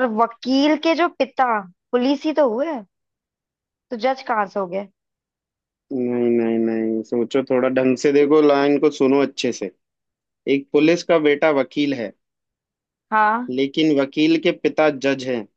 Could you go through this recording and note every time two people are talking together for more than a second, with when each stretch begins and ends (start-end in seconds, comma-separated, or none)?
none